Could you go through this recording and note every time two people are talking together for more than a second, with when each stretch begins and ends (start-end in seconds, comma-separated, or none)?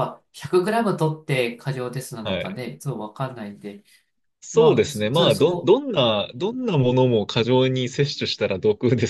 4.5-5.8